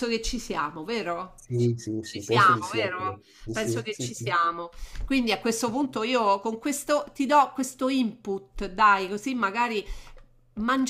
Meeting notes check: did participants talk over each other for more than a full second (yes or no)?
yes